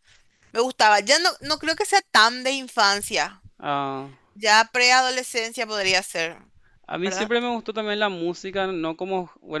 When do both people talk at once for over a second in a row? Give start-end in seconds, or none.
none